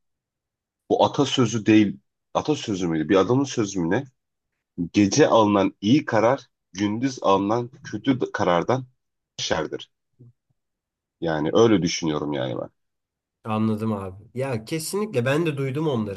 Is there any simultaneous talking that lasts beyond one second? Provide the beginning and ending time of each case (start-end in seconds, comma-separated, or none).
none